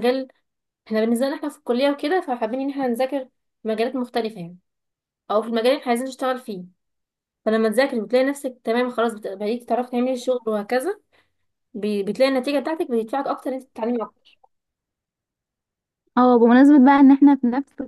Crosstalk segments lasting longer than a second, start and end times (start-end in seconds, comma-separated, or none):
none